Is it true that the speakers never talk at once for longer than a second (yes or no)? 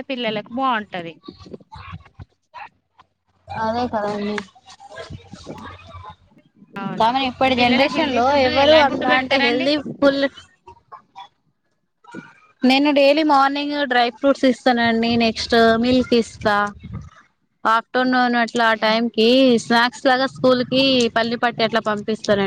no